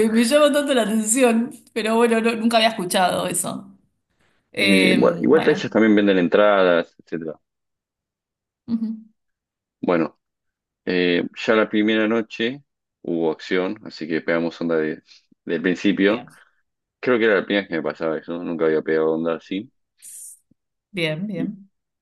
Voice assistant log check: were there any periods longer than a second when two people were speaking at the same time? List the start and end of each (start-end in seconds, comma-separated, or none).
4.6-5.8